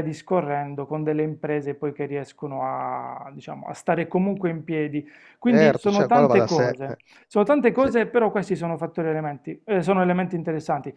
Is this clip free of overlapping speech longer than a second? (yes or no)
no